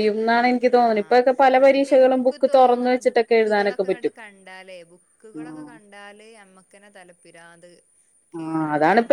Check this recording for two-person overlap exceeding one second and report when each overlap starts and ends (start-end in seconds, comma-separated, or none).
2.6-4.1